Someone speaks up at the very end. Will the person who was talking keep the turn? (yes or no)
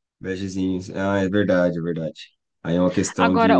no